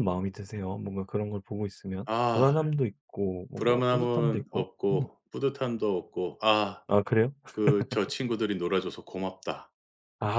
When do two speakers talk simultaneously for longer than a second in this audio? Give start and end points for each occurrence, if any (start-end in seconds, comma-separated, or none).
3.5-5.1